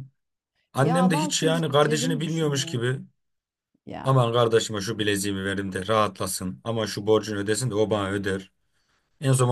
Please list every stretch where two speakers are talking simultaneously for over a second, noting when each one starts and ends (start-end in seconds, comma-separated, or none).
0.8-2.8